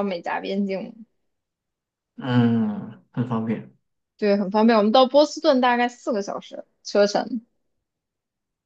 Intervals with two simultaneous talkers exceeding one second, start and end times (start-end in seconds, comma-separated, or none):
none